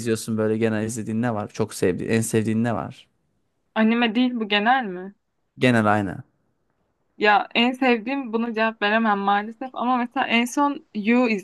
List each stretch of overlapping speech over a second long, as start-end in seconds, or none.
none